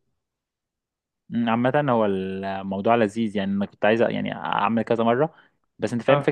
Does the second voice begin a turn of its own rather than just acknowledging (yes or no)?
no